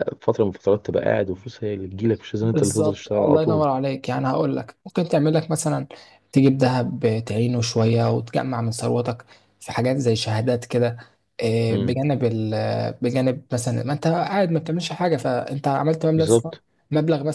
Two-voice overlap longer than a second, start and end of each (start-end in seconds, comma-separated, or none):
2.4-3.6